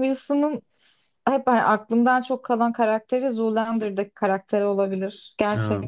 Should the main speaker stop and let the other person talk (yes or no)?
yes